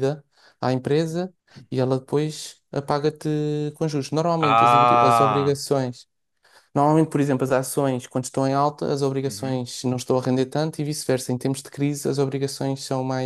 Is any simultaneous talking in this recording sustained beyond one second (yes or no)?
yes